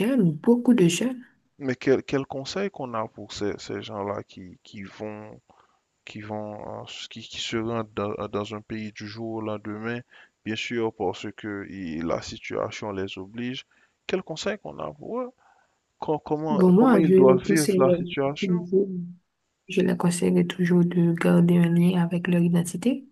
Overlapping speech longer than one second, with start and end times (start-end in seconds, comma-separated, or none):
16.5-18.7